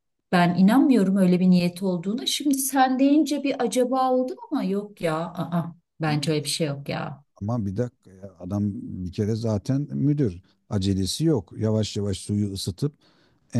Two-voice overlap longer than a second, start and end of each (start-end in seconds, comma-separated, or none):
none